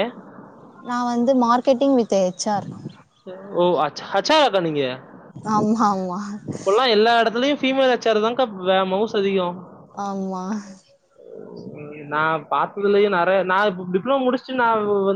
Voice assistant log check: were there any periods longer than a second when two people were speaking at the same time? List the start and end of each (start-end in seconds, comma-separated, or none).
none